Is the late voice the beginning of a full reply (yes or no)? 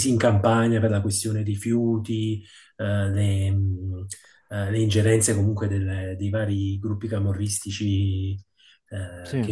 no